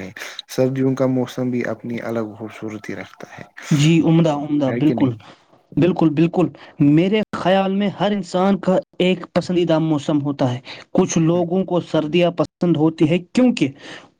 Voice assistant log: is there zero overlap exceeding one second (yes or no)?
yes